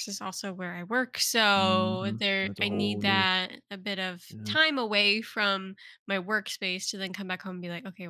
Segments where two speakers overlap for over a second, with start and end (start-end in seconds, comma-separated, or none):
1.6-3.3